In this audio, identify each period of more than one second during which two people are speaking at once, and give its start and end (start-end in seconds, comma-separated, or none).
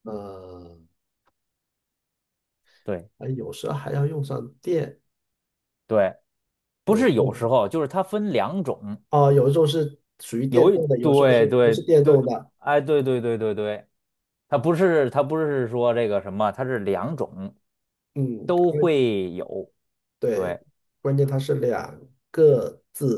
10.5-12.5